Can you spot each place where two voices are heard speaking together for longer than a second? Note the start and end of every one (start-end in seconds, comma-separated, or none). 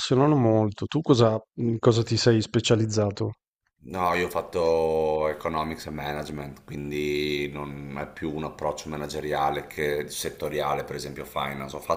none